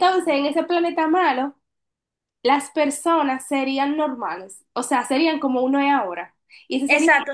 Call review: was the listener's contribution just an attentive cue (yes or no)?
no